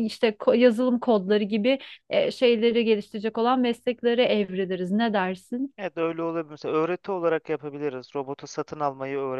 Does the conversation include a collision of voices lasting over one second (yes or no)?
no